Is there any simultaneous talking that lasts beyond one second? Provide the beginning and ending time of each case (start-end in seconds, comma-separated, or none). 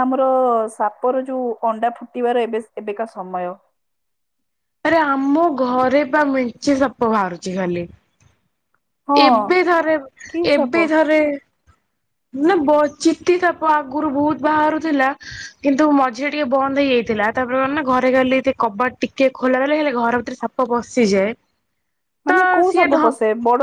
none